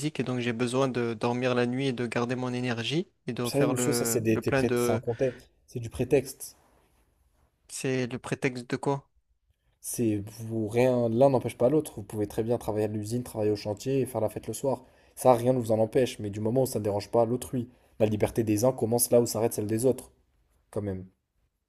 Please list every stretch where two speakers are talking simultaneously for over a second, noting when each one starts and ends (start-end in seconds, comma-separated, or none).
3.5-5.0